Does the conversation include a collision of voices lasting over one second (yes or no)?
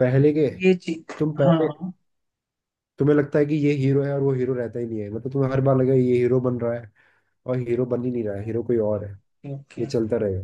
no